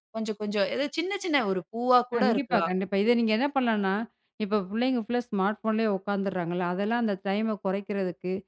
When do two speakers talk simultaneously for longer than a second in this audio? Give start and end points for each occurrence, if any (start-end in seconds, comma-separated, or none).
none